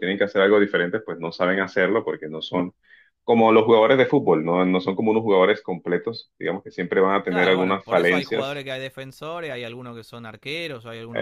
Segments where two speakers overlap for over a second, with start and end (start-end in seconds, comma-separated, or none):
7.3-8.6